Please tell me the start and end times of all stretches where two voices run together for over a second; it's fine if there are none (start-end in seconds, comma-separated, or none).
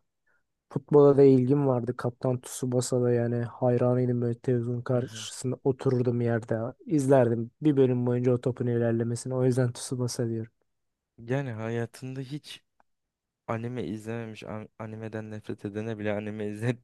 none